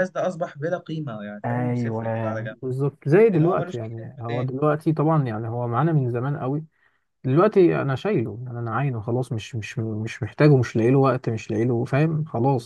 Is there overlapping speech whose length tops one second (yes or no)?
yes